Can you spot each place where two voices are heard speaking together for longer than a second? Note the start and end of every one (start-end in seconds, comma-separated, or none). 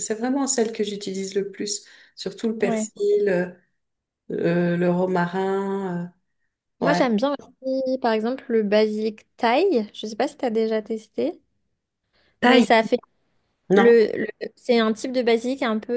none